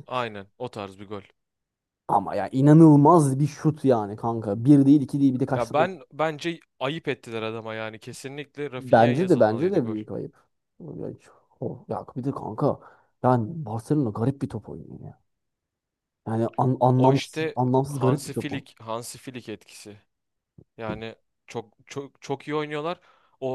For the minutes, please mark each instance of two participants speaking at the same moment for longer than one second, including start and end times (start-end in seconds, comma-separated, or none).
8.8-10.0, 17.0-18.7